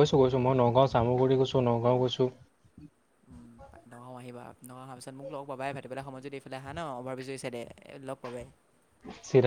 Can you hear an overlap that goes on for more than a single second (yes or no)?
no